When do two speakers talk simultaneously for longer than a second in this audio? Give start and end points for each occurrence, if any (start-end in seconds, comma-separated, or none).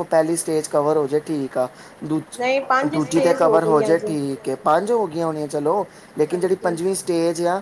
2.4-4.1